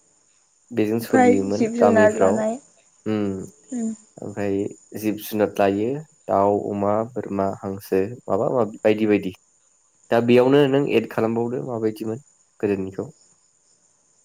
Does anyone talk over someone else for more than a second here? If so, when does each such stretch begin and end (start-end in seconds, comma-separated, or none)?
0.9-2.5